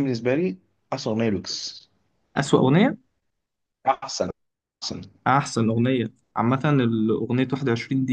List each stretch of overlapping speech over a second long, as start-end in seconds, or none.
none